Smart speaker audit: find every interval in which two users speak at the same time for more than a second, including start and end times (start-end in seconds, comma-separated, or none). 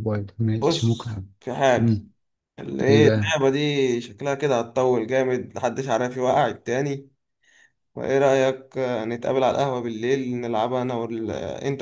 none